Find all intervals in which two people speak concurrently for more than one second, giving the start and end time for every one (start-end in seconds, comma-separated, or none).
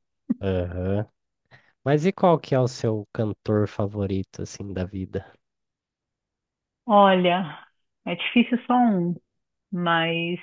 none